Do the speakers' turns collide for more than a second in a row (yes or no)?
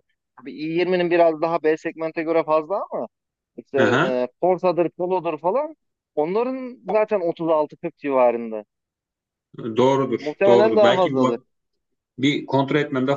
yes